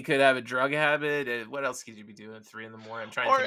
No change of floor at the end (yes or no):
no